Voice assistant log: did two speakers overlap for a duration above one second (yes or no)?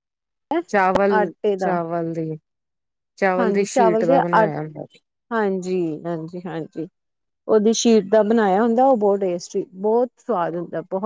no